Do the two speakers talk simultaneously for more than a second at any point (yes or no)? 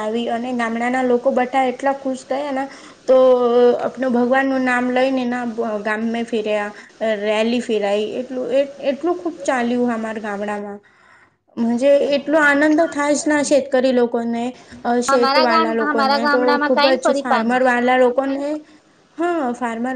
yes